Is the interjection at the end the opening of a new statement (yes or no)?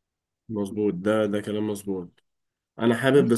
no